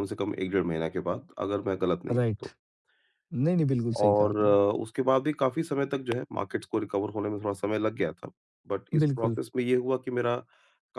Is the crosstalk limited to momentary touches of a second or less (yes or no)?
yes